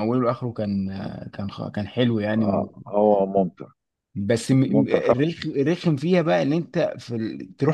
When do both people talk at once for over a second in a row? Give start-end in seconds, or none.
none